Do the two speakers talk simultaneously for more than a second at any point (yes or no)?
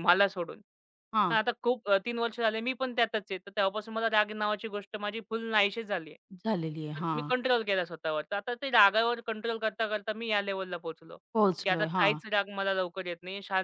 no